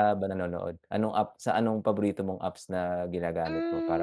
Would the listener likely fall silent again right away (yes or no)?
no